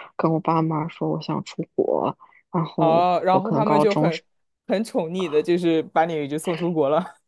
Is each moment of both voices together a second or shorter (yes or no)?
no